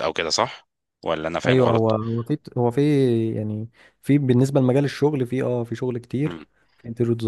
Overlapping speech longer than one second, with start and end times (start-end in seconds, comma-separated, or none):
none